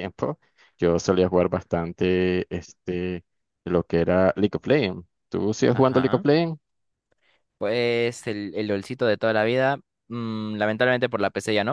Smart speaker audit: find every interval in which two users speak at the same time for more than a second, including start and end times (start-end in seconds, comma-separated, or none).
none